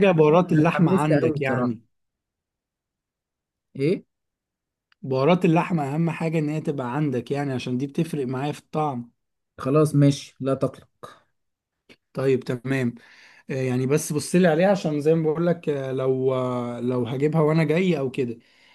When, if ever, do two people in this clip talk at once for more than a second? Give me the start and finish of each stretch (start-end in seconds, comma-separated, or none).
0.5-1.8